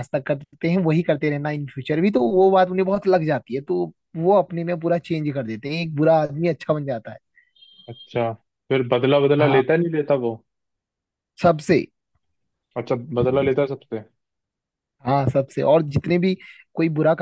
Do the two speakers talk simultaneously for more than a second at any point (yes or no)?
no